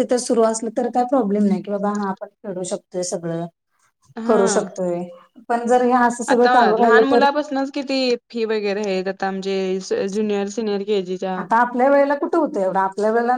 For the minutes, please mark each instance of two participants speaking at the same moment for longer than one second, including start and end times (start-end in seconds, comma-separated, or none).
none